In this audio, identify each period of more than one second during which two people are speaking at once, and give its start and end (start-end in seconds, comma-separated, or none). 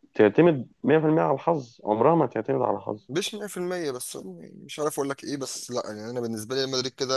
none